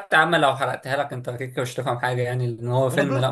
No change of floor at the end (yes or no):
yes